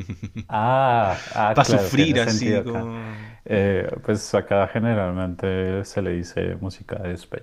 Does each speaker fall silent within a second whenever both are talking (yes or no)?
no